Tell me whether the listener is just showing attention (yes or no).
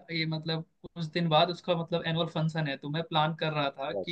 yes